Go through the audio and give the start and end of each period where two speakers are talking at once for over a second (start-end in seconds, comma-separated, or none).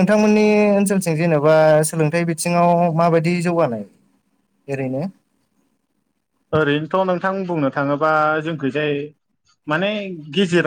none